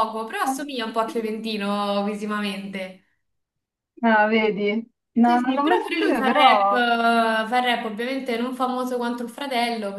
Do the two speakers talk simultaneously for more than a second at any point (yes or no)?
yes